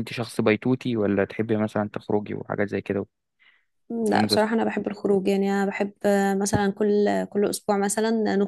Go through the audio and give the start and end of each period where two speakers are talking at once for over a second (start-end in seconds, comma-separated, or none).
none